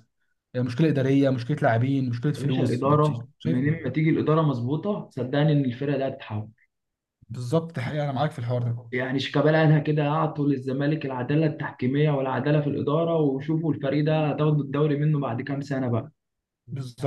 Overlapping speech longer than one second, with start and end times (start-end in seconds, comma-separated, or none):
2.4-3.9